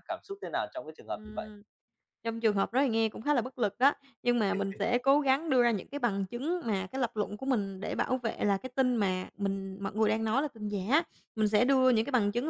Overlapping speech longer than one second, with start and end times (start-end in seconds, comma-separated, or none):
none